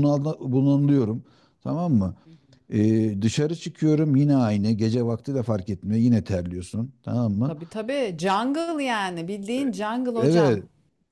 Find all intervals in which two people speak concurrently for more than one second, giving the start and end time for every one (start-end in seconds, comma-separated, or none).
none